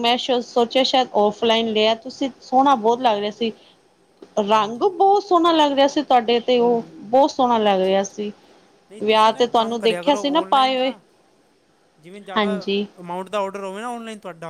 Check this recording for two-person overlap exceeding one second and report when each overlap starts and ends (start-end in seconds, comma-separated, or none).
9.0-10.9